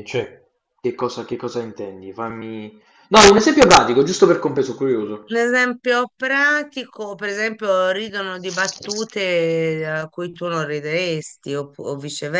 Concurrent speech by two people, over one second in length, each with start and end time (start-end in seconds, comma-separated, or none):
none